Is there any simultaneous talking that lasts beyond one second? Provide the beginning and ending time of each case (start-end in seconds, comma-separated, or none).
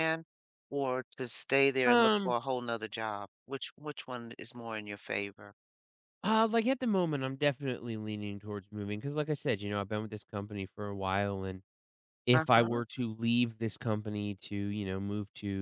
none